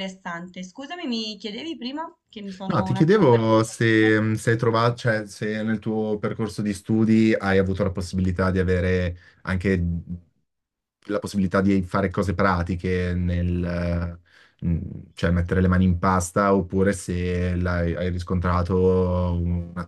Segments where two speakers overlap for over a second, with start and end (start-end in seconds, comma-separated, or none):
2.7-4.2